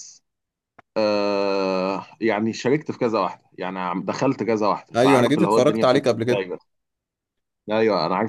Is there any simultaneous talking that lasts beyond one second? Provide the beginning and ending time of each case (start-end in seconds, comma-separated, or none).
5.0-6.5